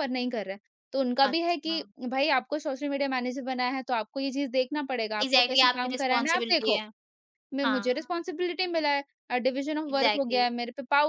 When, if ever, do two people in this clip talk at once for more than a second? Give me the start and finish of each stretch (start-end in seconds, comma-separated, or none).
5.2-6.8